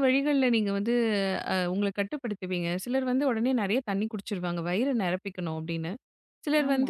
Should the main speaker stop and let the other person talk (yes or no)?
no